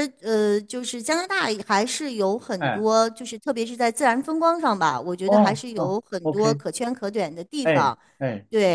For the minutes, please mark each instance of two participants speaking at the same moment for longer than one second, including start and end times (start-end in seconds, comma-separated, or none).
5.2-6.6